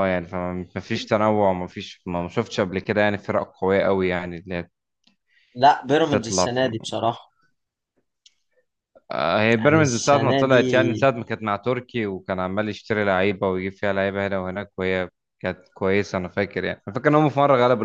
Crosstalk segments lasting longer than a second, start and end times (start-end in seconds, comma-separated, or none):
9.6-11.1